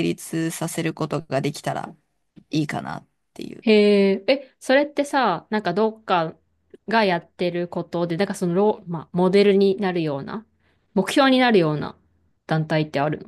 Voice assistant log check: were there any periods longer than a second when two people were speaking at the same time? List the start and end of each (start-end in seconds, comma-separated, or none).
none